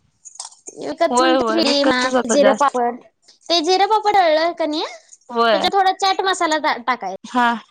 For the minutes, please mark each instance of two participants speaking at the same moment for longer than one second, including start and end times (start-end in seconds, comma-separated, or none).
1.1-2.8